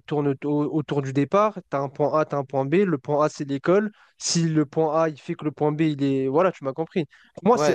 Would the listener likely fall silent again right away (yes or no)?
no